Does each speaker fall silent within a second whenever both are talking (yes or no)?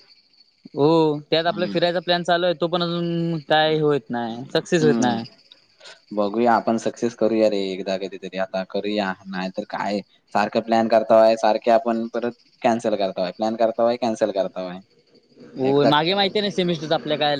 yes